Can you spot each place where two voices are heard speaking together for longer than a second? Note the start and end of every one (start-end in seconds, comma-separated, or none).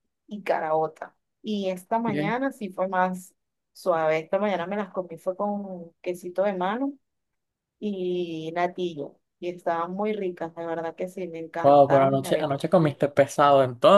11.6-13.0